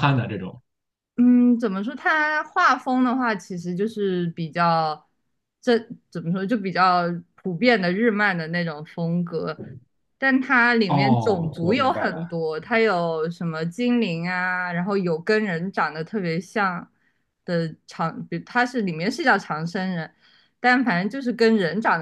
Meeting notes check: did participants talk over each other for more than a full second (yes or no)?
yes